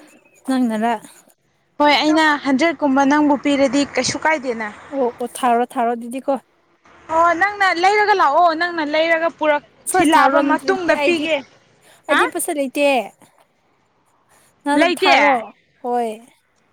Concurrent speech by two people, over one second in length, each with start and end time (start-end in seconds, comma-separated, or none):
9.9-11.2